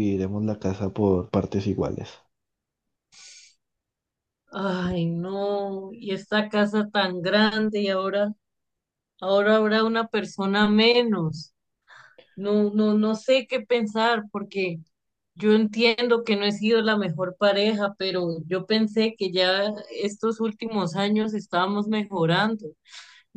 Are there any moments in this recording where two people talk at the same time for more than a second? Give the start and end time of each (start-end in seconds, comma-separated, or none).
none